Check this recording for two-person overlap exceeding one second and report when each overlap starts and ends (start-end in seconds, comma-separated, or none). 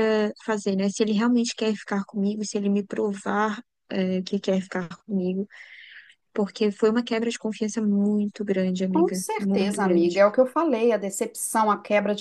8.9-10.2